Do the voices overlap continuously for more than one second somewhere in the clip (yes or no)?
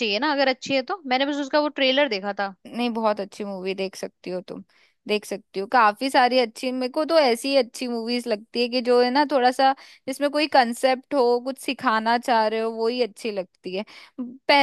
no